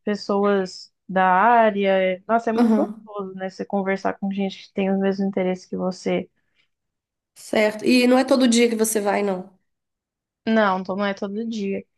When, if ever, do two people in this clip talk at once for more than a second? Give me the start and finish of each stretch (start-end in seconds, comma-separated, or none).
none